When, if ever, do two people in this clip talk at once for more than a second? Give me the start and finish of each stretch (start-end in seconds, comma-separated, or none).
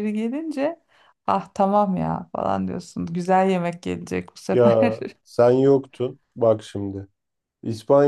none